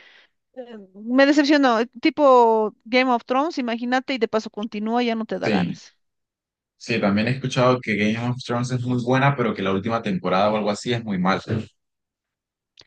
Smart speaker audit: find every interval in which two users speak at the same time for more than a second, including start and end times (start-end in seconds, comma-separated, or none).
none